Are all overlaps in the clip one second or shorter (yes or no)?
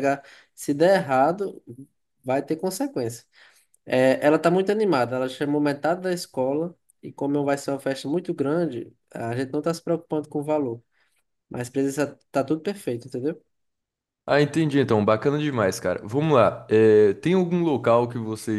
yes